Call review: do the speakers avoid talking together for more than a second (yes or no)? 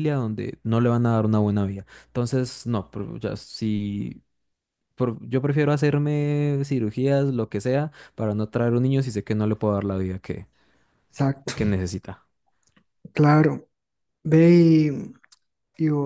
yes